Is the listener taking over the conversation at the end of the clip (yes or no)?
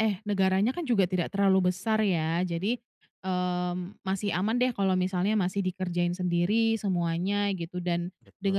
no